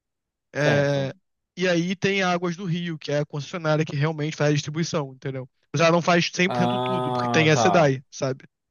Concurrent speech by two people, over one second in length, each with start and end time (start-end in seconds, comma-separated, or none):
6.5-7.7